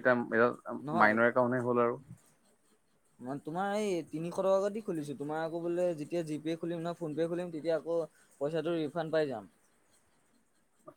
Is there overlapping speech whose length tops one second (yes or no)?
no